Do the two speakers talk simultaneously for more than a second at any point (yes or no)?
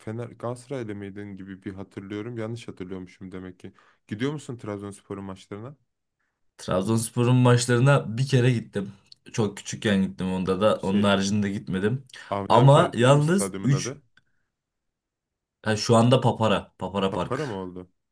yes